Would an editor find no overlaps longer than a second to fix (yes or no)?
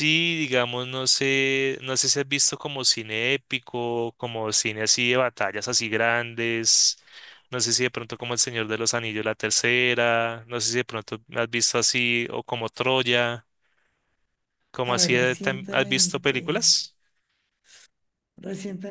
no